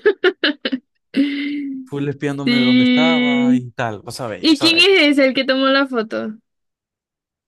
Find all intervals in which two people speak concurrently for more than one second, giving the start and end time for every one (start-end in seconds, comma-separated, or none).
2.4-3.7